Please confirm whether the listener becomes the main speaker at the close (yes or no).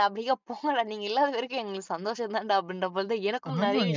yes